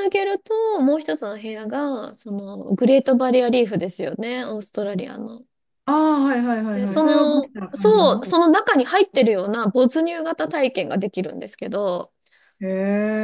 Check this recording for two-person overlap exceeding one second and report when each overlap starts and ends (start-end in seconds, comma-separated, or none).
6.7-8.3